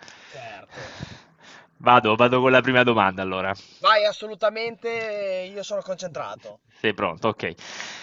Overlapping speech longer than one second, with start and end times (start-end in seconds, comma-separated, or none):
none